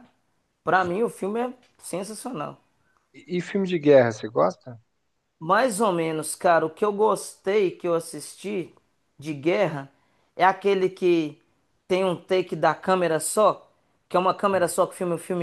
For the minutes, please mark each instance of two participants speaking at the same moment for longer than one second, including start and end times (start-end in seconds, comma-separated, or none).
none